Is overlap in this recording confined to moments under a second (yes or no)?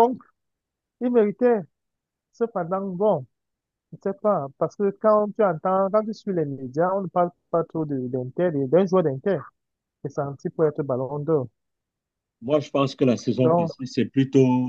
yes